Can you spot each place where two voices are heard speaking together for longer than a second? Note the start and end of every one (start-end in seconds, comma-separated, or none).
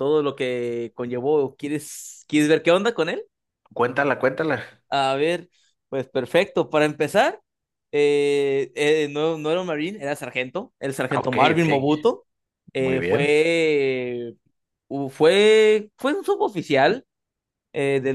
none